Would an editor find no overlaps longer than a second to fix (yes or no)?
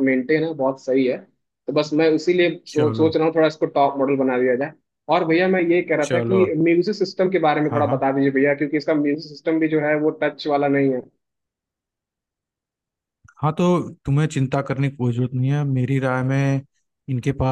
yes